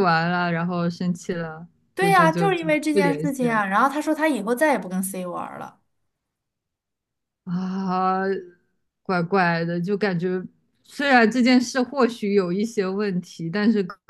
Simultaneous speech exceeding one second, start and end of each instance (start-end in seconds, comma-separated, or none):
1.9-3.6